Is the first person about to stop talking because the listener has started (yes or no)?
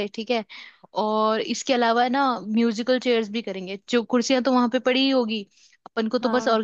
no